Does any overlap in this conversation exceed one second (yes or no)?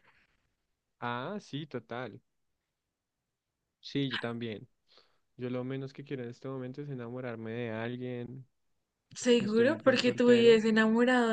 yes